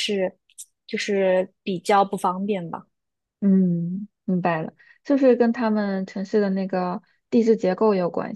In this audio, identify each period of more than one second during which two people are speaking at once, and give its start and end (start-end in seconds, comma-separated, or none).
none